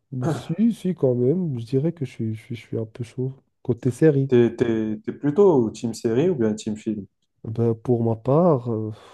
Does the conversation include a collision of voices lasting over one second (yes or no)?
no